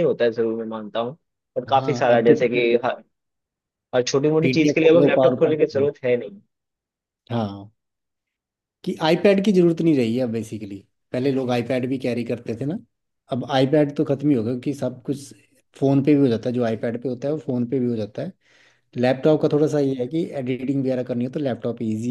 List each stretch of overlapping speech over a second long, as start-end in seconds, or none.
4.4-5.9